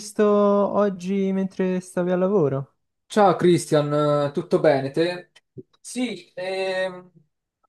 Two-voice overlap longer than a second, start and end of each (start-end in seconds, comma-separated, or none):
none